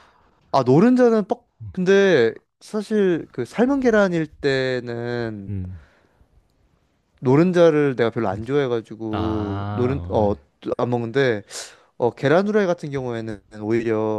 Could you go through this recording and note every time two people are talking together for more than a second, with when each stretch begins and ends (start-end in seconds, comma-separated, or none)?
9.1-10.3